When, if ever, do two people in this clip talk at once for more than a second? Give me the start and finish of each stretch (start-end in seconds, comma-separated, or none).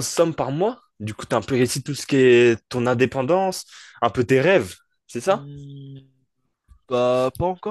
none